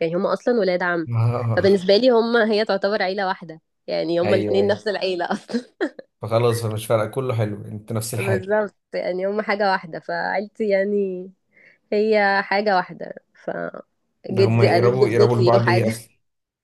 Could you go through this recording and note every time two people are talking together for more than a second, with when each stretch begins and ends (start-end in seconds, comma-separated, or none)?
14.3-15.9